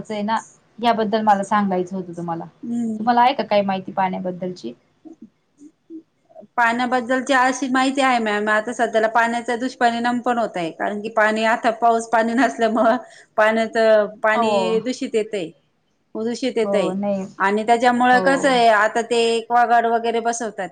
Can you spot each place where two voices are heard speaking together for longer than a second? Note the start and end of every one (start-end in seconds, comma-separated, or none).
none